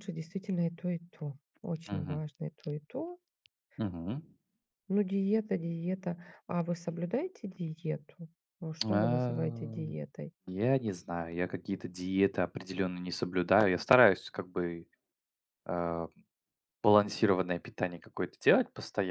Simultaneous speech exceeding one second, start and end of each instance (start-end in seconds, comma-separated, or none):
8.8-10.1